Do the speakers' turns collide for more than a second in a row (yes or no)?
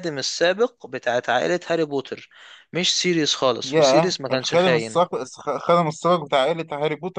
yes